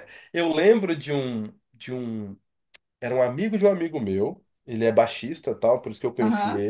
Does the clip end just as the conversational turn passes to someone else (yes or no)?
no